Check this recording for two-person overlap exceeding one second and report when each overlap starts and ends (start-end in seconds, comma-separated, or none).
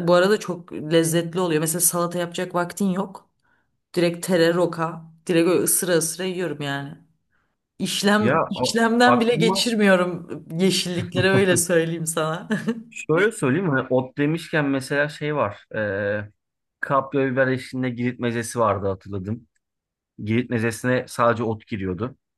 8.2-9.7